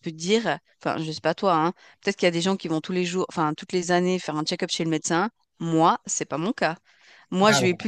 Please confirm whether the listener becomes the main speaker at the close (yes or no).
no